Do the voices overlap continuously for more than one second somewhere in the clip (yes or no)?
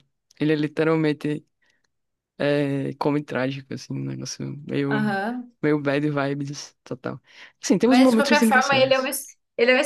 yes